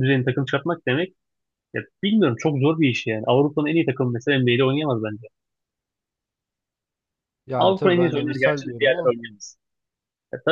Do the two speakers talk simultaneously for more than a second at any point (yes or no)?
yes